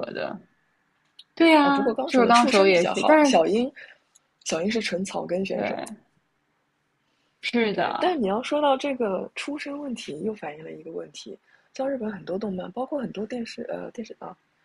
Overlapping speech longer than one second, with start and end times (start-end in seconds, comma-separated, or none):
1.6-3.3